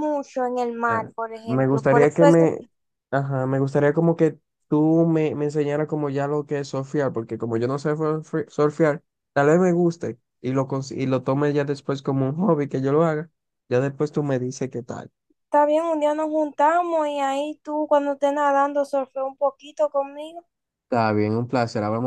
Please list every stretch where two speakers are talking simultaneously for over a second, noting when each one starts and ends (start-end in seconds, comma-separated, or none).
0.9-2.6